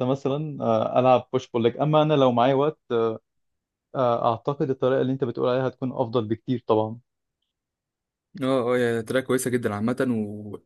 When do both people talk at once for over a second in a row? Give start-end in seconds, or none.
none